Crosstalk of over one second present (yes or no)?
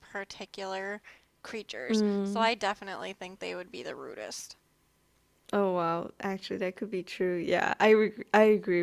no